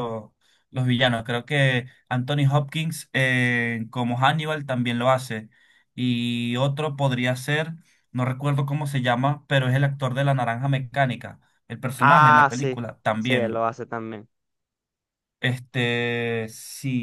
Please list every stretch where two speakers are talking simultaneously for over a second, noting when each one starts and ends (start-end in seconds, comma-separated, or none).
12.0-13.7